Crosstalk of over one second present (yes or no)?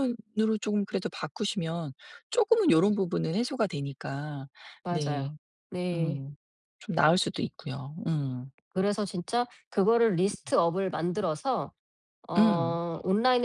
no